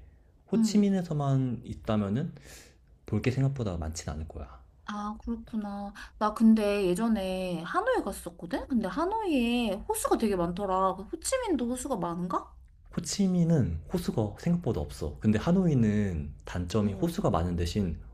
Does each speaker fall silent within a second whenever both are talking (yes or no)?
yes